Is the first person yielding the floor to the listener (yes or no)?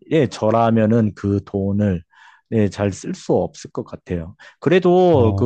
no